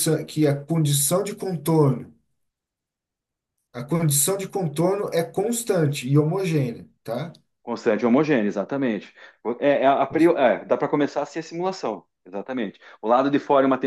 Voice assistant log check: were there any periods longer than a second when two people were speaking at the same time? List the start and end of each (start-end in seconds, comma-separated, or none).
none